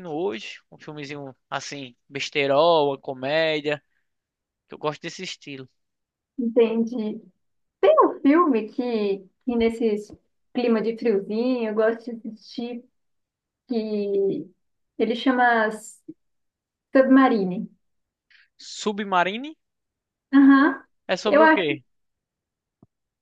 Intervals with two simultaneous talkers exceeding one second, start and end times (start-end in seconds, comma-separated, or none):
none